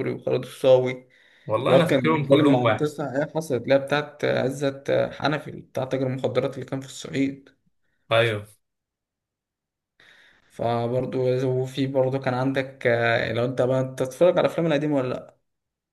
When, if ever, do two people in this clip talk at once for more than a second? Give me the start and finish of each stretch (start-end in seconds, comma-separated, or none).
1.6-2.9